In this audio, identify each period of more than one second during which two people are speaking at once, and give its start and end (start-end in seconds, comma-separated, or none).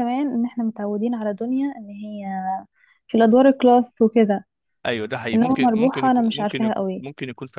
5.3-7.0